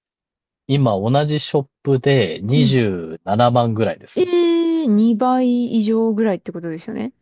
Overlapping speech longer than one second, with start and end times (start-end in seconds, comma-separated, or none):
none